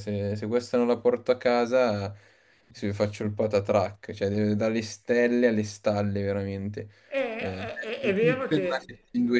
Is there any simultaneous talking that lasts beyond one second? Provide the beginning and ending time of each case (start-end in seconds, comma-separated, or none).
7.4-8.9